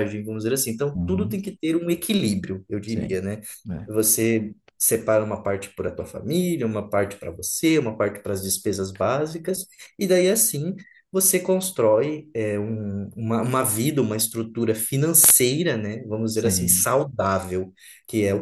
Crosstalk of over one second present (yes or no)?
no